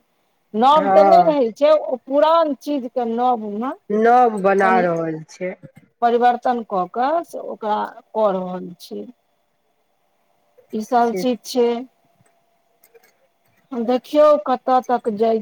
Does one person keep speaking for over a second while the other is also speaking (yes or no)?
no